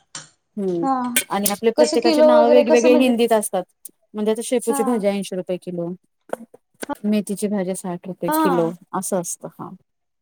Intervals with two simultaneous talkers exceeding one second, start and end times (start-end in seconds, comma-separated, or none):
1.8-3.1